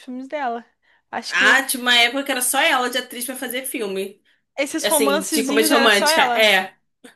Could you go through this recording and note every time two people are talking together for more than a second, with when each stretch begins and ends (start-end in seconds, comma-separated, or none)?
4.8-6.5